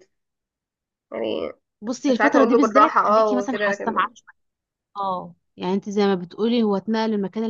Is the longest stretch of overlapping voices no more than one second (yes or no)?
no